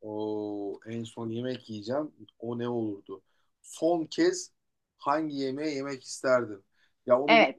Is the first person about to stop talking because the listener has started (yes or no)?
yes